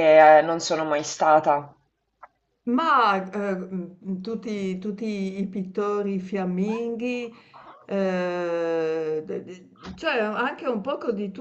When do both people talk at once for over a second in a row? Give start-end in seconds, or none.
none